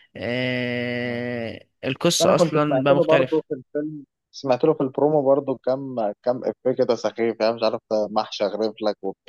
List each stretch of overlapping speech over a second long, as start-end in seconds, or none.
2.2-3.4